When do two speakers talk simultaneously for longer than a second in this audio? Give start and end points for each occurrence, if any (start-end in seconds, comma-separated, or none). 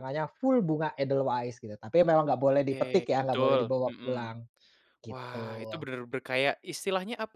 2.7-4.3